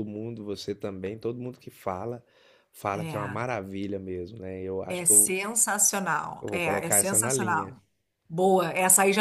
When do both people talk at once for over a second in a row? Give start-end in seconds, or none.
6.4-7.8